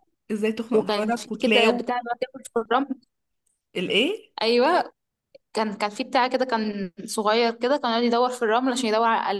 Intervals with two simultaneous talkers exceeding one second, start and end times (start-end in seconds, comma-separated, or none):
0.7-1.9